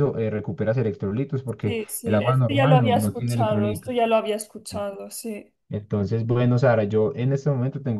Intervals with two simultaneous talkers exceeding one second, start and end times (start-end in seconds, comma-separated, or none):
1.6-4.0